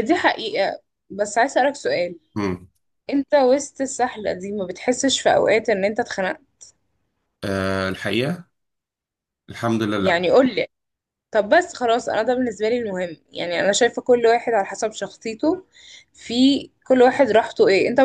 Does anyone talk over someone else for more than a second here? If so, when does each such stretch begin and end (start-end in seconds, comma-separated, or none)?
none